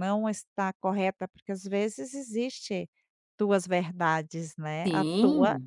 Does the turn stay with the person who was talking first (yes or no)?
no